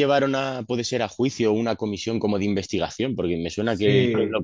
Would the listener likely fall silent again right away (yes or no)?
yes